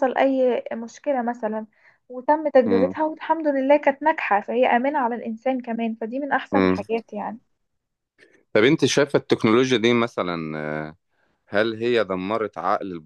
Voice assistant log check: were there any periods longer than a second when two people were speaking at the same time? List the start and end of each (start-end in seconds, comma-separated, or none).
none